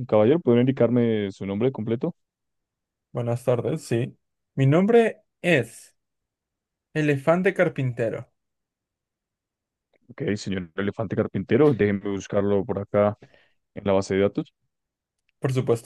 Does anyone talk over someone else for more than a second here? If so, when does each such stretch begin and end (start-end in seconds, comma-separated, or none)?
none